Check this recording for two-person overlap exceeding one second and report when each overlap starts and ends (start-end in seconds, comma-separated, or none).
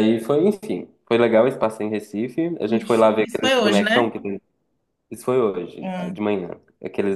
2.6-4.2